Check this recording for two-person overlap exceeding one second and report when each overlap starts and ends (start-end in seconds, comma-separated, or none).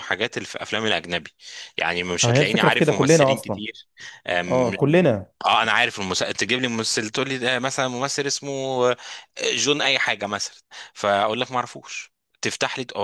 2.2-3.6